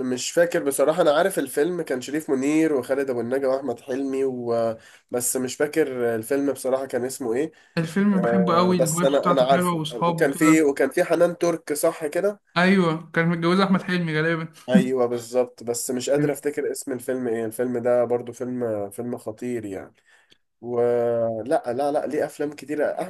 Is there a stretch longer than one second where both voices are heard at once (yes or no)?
yes